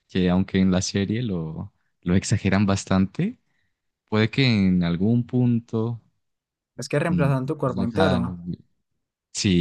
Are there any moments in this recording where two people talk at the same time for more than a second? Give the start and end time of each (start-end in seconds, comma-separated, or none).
7.1-8.4